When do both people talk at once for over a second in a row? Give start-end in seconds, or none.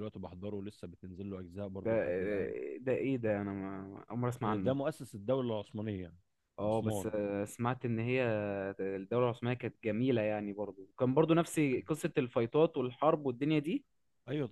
none